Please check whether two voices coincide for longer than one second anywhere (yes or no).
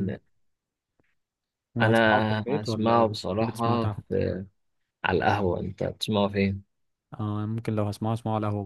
yes